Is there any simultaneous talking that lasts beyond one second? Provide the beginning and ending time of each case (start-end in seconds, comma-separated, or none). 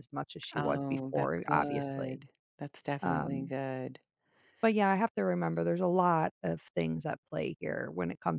0.6-2.2